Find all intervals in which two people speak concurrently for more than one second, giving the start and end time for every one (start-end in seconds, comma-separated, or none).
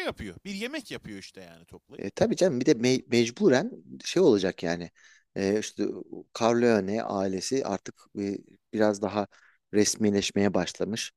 none